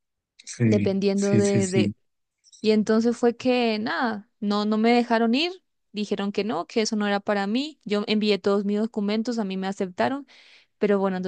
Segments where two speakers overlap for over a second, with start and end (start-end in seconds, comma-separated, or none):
0.6-1.9